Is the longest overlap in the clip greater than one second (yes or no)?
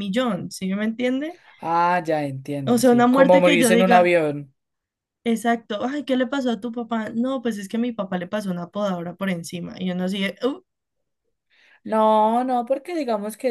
yes